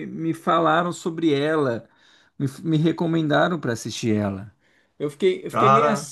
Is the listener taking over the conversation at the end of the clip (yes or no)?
no